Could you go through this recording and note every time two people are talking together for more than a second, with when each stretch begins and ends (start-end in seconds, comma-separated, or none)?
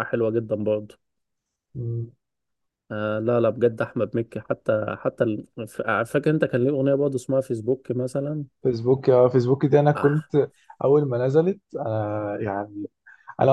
none